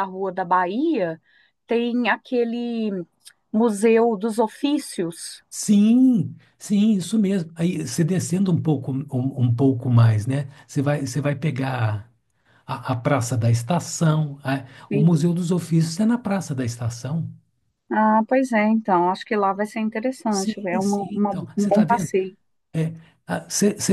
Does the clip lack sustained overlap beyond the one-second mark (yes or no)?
no